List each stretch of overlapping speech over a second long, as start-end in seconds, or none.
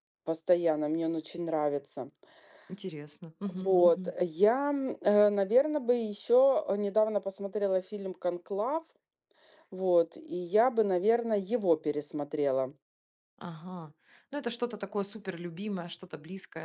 none